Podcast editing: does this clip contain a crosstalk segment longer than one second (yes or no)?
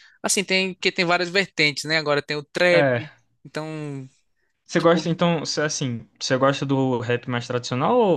no